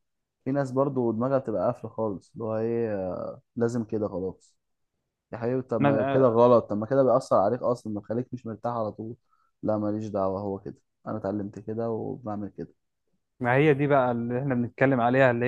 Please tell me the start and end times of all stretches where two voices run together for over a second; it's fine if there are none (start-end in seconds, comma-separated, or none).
none